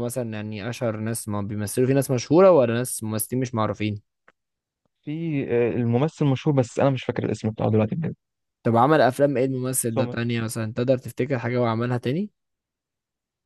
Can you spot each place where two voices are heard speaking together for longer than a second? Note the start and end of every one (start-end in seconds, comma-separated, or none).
none